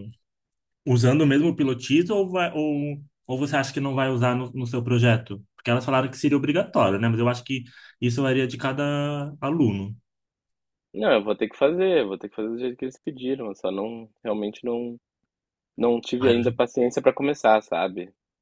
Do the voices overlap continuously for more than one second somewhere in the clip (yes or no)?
no